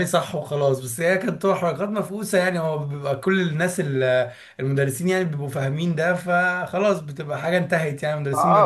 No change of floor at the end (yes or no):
no